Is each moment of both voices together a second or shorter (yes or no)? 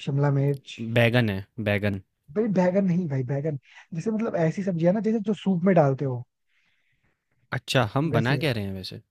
yes